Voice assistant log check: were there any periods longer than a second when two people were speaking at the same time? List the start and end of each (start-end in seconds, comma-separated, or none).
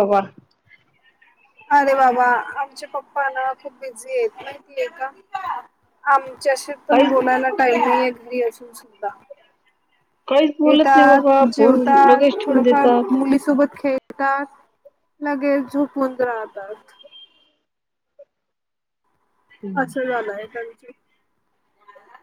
10.6-13.2